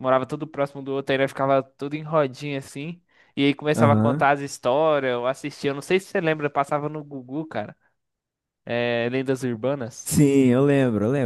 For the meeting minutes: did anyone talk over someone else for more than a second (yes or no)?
no